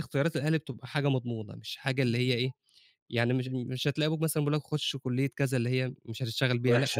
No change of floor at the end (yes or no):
no